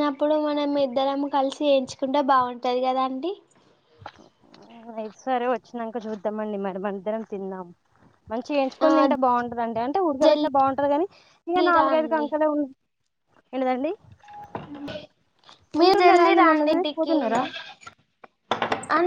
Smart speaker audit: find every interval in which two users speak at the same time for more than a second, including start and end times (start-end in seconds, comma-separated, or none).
15.8-17.1